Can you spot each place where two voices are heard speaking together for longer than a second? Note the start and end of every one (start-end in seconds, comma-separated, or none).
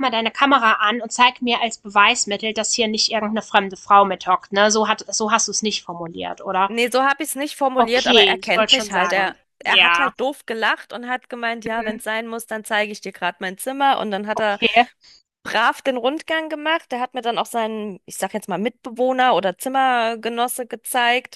7.8-10.1